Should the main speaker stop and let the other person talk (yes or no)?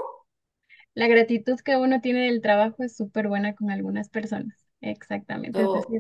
no